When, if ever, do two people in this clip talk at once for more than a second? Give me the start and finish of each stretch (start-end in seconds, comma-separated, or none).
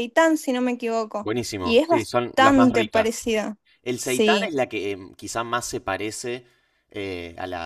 1.2-3.3